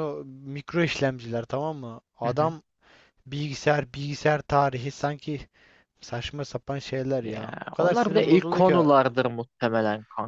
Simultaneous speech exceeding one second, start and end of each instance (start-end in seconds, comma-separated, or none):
7.2-8.8